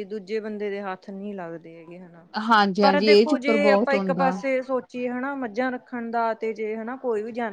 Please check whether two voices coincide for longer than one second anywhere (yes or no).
yes